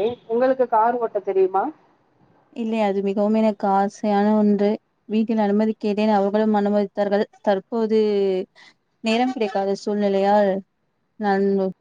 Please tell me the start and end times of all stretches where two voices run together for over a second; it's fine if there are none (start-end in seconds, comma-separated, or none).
none